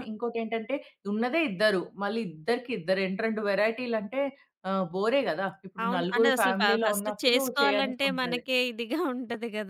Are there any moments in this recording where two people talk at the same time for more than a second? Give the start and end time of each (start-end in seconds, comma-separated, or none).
5.8-8.4